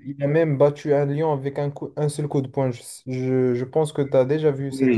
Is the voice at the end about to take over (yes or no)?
yes